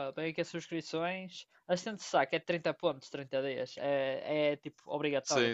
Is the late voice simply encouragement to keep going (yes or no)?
no